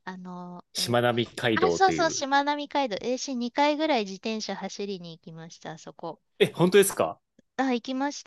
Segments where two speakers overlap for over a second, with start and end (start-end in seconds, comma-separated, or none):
0.7-2.2